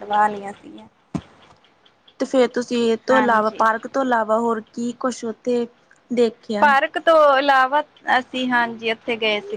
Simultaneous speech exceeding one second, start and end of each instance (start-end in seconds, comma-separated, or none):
none